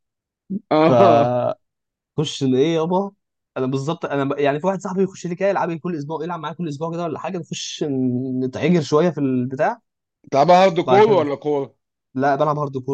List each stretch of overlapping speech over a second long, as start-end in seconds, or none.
none